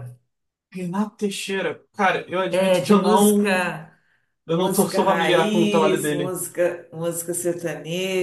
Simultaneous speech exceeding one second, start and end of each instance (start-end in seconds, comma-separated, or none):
2.5-3.7, 4.5-6.4